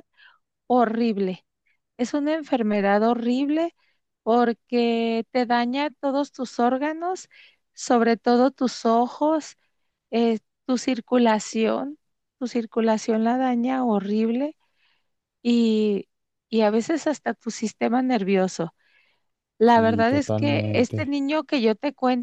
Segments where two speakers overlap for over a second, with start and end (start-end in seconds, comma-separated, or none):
19.6-21.1